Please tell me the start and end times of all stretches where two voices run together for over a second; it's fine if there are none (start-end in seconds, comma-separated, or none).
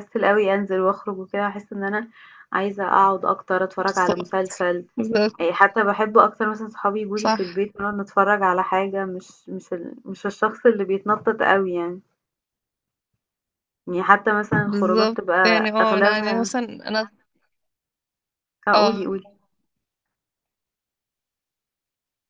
14.6-16.5